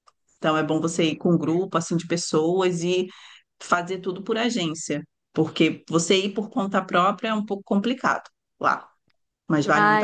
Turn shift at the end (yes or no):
yes